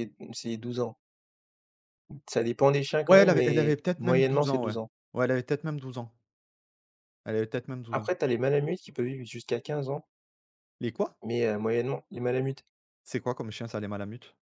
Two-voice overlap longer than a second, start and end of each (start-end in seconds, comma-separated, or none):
3.1-4.7